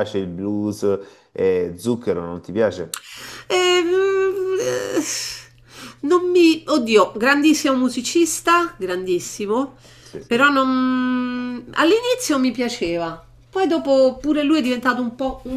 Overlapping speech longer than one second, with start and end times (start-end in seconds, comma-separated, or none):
none